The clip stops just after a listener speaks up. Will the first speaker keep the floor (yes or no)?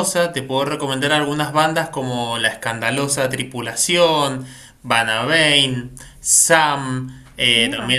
yes